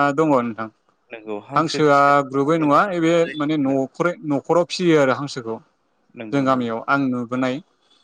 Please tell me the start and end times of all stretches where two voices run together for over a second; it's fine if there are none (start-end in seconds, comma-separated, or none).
1.6-3.8